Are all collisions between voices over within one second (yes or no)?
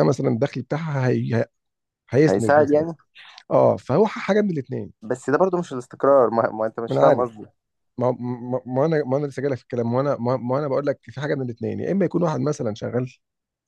yes